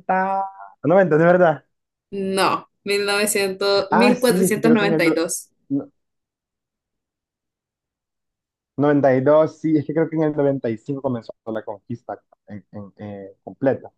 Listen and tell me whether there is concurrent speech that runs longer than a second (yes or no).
yes